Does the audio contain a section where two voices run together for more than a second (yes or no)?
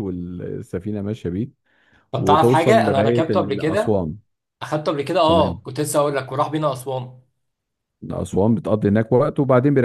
yes